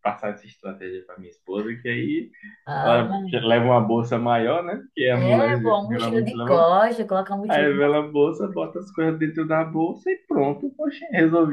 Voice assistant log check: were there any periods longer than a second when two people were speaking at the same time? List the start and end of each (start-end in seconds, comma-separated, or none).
5.1-6.7